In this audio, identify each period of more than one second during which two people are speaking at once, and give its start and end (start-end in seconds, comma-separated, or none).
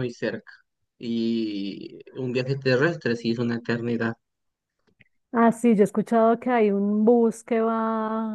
none